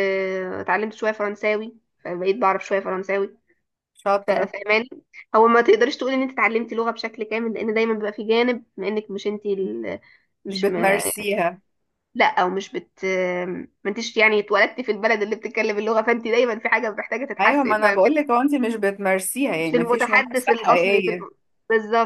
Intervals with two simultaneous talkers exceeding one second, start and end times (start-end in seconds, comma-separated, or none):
19.6-21.3